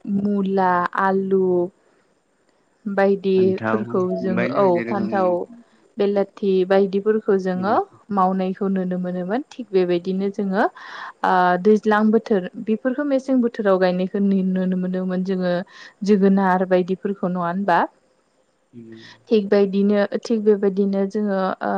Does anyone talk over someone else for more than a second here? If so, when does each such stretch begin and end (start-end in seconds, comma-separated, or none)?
3.3-5.3